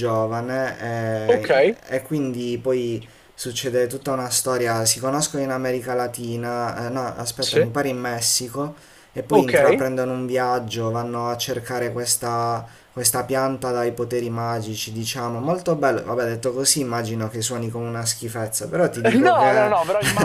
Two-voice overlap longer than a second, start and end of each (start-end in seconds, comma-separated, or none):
none